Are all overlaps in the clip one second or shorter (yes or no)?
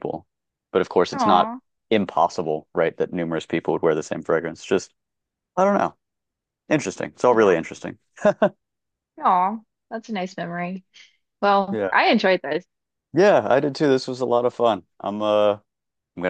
yes